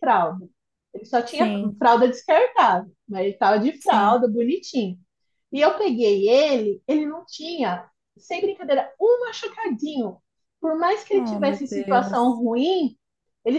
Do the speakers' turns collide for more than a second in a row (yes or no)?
yes